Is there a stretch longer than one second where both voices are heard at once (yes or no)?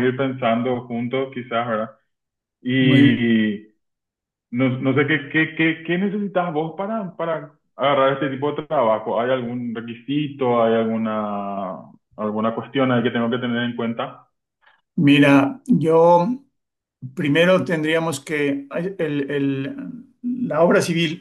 no